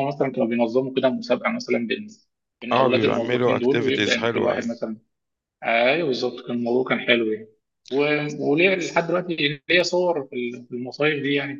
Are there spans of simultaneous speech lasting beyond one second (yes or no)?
yes